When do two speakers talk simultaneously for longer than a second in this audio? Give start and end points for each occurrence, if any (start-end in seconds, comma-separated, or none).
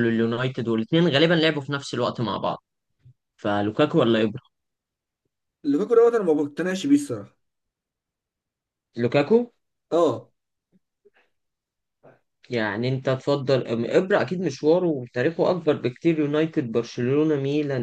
none